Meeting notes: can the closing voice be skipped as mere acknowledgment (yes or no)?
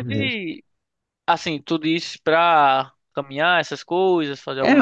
no